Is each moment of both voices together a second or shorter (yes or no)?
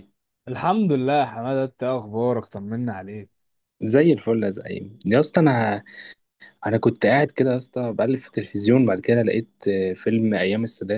yes